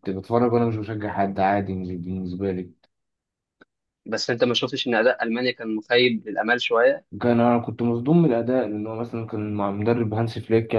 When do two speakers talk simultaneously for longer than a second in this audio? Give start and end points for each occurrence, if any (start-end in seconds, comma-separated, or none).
none